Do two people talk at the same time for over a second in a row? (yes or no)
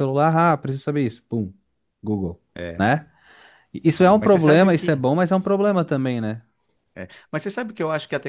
yes